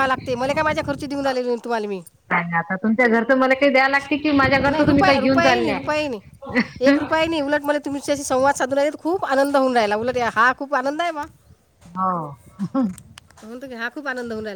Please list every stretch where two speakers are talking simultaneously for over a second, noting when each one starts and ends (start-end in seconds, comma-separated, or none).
4.5-5.9